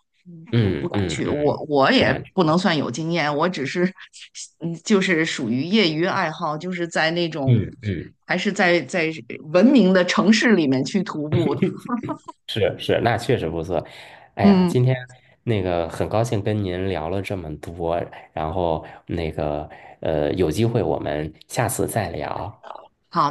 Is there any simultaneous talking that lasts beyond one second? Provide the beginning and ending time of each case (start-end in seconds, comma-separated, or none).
0.5-2.3